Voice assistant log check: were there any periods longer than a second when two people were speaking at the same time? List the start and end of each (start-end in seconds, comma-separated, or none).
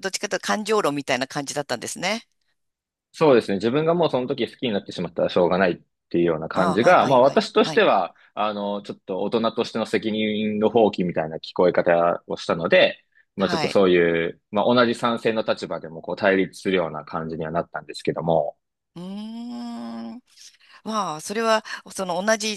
6.5-7.8